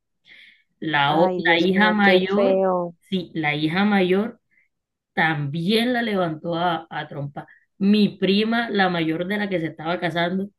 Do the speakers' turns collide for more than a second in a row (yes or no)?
yes